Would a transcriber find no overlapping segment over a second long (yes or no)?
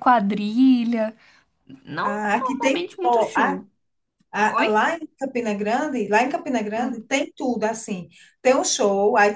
no